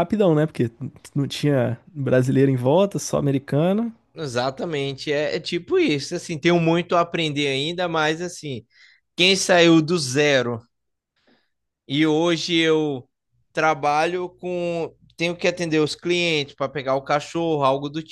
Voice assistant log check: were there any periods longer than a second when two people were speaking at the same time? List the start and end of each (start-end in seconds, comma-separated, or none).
none